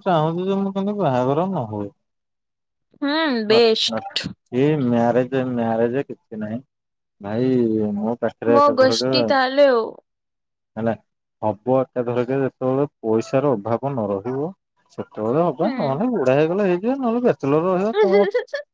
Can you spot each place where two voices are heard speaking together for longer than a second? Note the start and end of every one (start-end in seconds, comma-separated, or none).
none